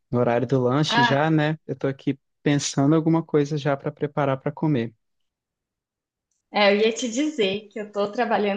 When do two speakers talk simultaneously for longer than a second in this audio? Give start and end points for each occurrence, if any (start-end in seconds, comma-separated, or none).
none